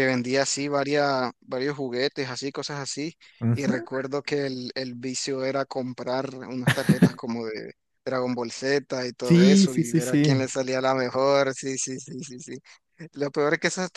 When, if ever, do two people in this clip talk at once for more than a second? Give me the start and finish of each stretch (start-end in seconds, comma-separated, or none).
9.2-10.4